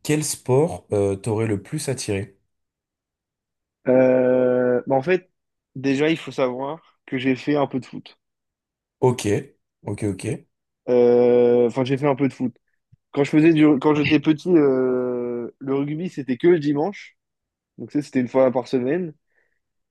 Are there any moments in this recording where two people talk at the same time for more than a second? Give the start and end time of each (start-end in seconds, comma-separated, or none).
none